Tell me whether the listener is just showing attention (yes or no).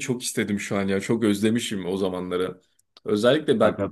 yes